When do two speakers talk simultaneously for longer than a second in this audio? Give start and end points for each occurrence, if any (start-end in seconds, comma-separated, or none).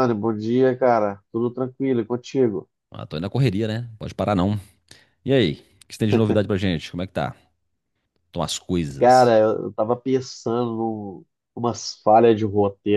none